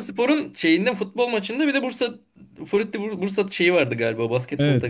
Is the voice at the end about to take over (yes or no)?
yes